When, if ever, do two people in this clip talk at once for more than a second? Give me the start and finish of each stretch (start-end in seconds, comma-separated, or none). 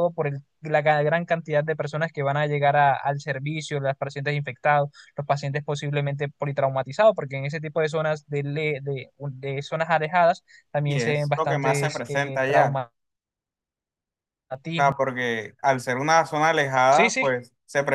10.8-12.8